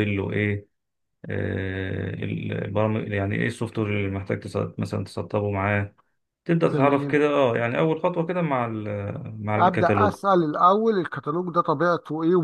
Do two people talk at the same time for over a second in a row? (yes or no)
no